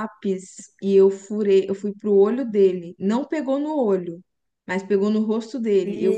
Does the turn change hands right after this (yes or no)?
no